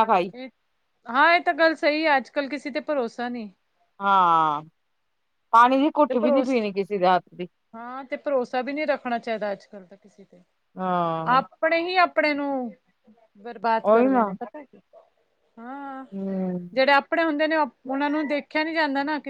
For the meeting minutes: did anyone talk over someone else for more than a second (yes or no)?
no